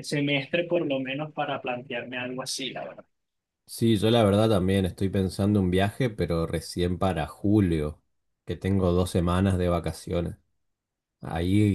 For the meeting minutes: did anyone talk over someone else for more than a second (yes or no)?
no